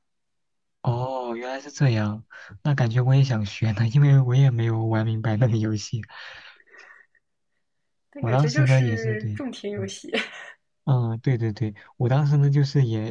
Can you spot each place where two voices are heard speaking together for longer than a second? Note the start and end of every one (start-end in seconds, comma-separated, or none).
8.2-9.9